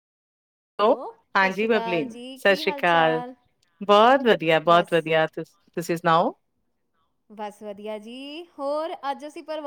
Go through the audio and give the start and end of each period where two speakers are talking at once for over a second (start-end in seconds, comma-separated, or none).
1.4-3.2